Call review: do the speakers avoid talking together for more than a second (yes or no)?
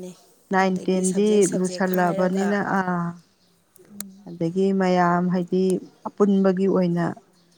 no